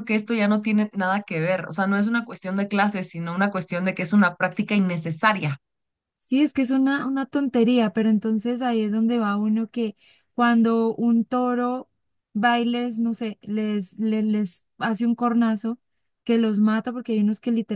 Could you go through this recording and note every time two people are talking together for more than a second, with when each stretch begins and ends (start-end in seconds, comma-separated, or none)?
none